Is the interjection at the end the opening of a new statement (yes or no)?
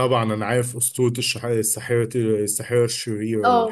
yes